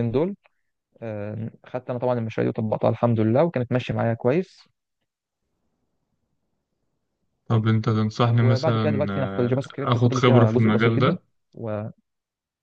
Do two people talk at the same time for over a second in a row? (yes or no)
yes